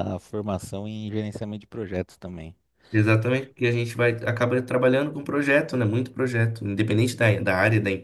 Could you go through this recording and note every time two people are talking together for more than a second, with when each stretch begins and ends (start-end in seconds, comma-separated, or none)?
none